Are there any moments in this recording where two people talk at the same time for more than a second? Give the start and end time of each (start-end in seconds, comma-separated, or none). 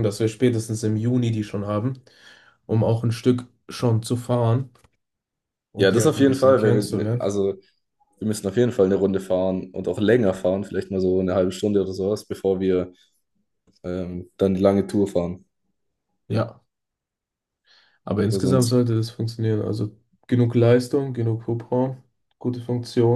5.8-7.3